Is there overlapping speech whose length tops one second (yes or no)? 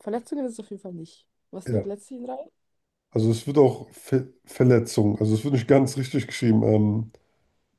no